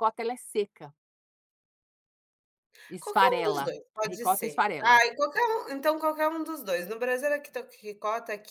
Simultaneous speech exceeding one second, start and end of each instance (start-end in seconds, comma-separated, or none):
3.0-5.0